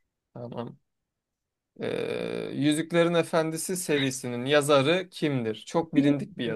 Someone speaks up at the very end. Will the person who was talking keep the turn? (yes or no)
no